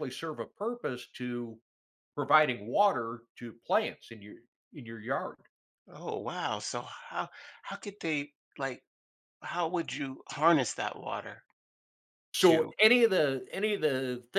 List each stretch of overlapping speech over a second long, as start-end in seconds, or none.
none